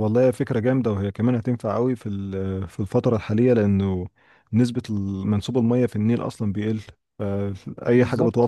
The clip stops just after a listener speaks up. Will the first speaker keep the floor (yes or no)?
yes